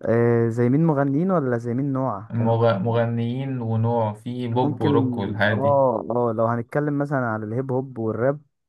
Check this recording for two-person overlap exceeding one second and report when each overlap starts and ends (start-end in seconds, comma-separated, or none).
none